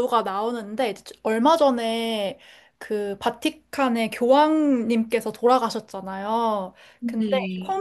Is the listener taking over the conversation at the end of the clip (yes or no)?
no